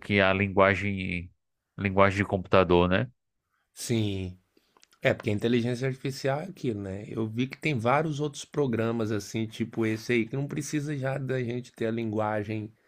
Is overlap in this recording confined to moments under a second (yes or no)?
yes